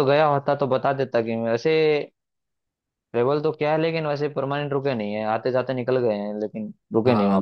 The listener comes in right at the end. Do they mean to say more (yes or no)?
yes